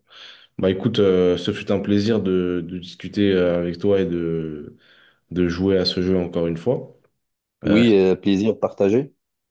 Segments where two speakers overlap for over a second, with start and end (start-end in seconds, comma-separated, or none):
none